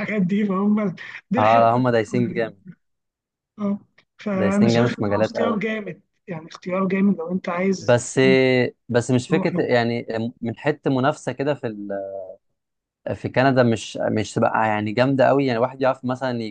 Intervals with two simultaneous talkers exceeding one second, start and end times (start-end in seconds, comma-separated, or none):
4.3-5.6